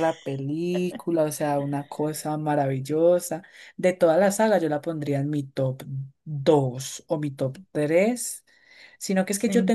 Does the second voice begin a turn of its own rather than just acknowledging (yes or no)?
no